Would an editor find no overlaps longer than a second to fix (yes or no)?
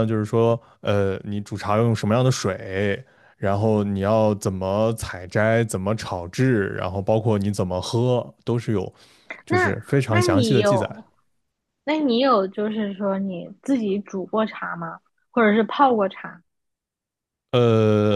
no